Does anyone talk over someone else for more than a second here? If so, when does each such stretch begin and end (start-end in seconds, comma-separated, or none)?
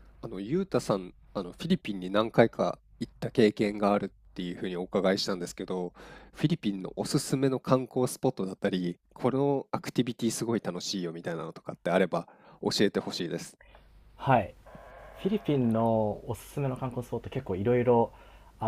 none